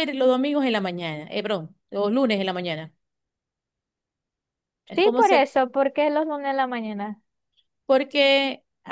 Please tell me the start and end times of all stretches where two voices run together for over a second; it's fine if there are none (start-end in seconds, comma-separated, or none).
none